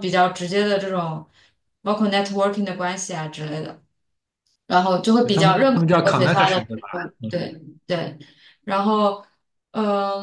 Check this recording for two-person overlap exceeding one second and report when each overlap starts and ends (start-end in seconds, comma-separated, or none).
5.2-7.3